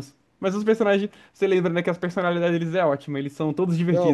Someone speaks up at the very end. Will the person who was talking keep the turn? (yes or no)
no